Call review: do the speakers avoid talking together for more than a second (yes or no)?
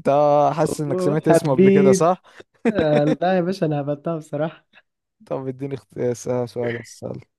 no